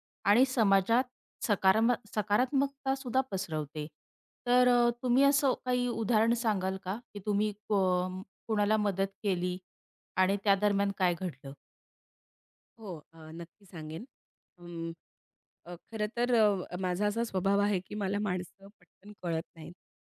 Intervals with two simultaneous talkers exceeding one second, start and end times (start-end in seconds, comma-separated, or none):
none